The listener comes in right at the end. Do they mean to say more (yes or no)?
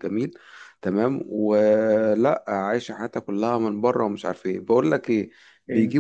no